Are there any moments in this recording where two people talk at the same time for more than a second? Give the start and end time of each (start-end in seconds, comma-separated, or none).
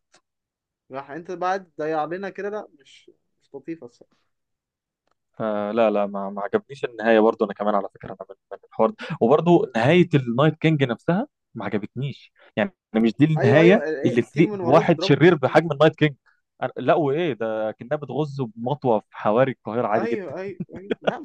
13.4-15.6